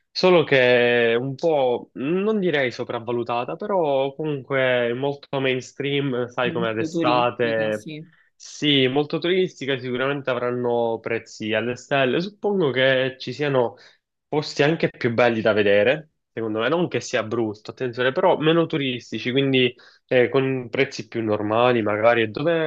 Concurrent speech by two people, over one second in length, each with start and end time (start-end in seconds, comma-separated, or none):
6.5-7.9